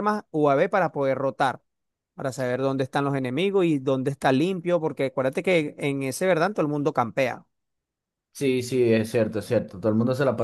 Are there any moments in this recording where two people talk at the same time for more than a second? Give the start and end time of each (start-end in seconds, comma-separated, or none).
none